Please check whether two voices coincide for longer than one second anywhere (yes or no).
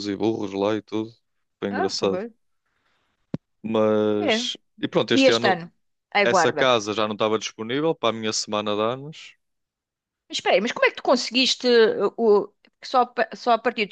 no